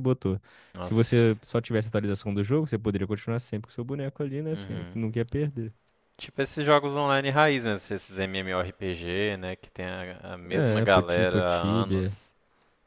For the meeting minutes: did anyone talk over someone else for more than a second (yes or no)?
yes